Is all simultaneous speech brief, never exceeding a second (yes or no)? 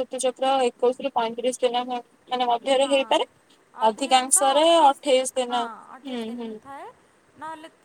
no